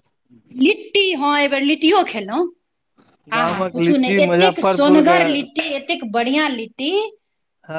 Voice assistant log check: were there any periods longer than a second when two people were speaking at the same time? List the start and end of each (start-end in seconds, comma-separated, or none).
3.4-5.2